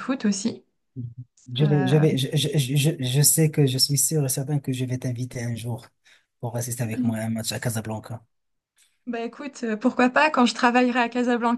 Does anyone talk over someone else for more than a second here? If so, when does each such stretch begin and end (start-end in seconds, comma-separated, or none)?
none